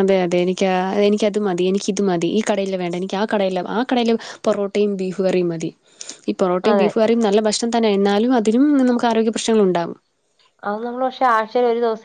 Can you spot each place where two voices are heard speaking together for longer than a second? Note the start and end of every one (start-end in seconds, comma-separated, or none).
none